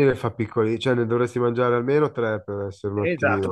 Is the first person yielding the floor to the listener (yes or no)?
yes